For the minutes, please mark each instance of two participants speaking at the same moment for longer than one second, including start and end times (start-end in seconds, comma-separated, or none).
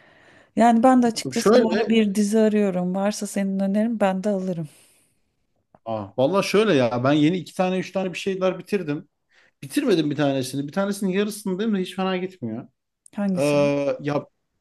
none